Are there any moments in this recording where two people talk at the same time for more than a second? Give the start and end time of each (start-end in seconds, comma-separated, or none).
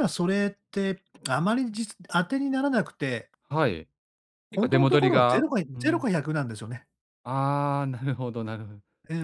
4.5-6.0